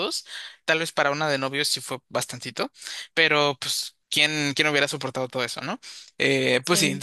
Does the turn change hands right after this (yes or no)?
no